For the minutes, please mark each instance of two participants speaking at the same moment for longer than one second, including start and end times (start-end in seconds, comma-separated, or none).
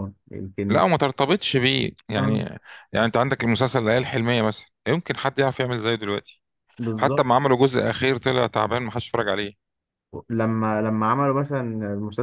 none